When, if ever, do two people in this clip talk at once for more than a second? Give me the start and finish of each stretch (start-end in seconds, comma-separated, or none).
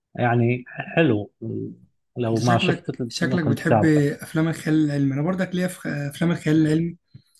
2.3-4.0